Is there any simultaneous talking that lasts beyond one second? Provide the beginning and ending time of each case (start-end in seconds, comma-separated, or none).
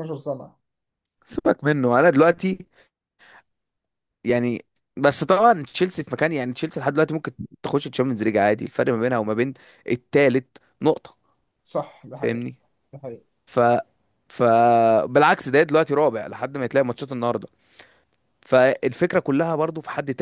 none